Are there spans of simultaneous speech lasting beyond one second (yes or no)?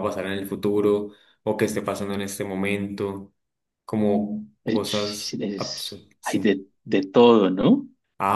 yes